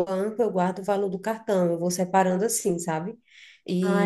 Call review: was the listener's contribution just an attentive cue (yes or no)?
yes